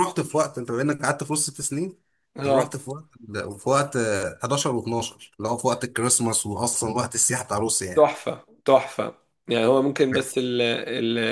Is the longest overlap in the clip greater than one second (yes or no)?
no